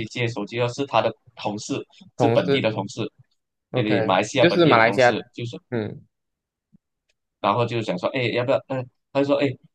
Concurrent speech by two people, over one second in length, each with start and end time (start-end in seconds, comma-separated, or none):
3.7-5.1